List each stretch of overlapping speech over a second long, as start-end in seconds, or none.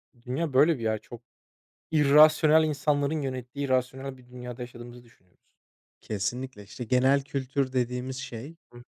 none